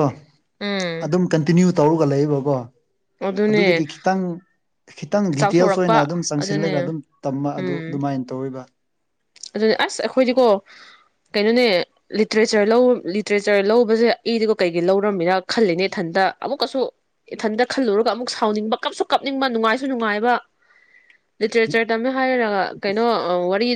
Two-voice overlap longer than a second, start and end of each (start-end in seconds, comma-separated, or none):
5.4-6.9